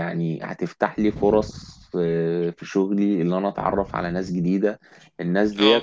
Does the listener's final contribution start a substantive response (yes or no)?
no